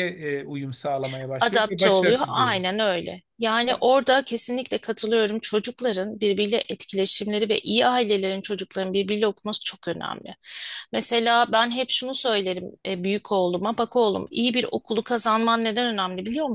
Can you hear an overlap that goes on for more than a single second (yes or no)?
yes